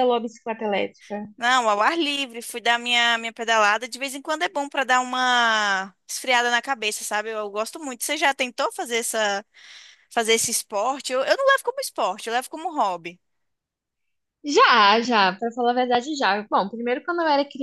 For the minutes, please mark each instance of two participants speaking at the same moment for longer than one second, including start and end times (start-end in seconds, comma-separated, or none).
none